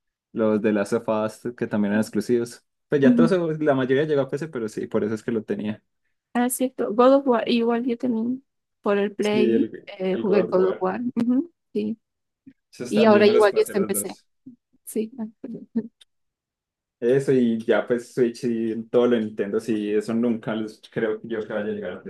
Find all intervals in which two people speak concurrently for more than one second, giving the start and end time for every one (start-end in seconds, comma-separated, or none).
9.2-10.9, 12.9-14.2